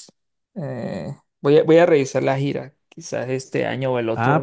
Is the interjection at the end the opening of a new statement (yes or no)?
yes